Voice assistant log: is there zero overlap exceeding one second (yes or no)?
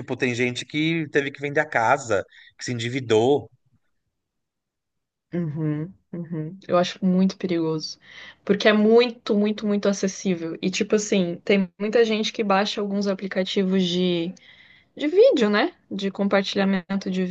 yes